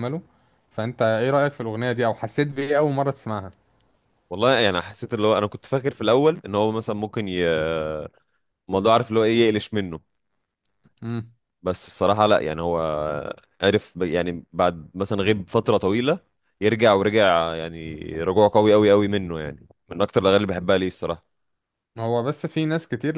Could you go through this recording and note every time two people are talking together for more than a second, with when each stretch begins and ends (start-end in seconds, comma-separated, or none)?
none